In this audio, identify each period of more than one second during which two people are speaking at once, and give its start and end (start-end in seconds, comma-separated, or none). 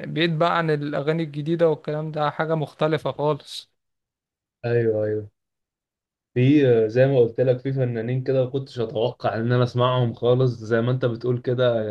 none